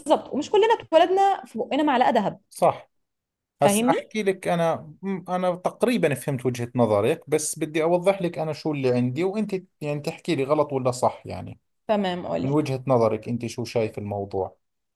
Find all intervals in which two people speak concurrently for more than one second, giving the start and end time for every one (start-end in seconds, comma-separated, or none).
none